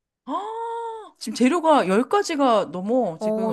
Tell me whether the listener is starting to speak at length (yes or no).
yes